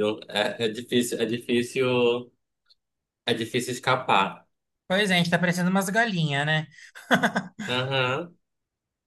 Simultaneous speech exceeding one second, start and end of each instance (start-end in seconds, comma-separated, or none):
none